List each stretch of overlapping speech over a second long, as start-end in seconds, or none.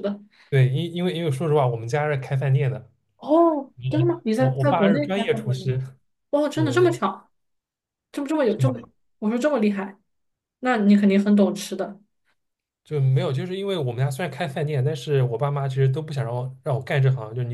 4.4-5.7